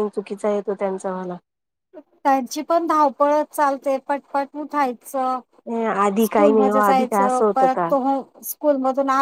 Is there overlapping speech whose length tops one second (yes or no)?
yes